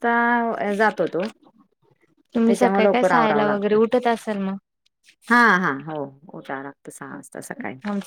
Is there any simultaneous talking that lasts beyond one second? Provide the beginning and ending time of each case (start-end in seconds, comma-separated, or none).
2.5-3.8